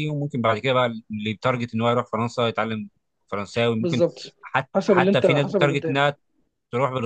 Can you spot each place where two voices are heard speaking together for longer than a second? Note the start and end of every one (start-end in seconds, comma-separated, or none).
4.7-6.0